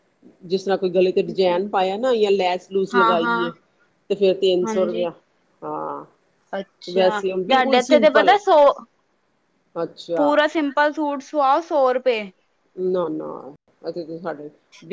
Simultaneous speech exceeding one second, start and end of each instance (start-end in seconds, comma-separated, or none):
6.9-8.3